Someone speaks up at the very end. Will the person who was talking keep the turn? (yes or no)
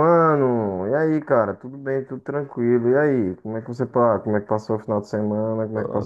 no